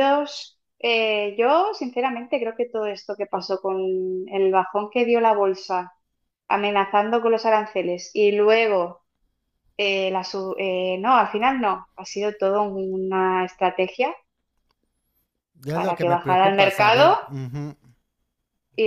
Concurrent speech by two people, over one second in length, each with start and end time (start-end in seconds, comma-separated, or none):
15.7-17.2